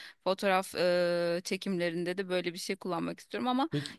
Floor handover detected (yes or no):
no